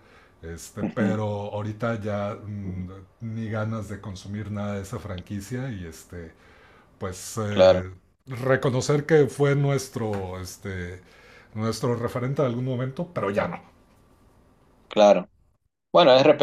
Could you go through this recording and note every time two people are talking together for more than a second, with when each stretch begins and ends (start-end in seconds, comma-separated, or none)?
none